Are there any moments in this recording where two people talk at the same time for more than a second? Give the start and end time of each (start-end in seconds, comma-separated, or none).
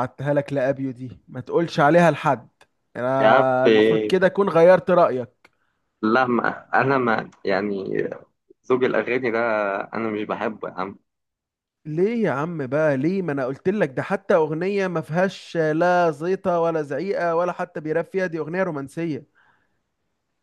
none